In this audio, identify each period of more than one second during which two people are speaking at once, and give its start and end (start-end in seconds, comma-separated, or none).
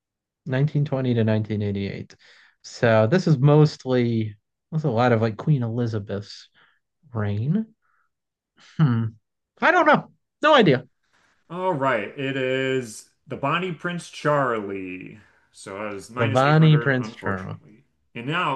16.2-17.6